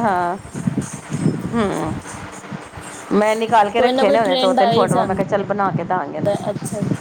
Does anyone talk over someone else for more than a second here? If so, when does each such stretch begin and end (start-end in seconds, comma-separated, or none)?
3.8-5.2